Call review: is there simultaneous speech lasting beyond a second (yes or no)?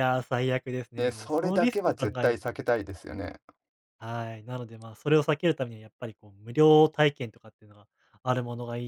yes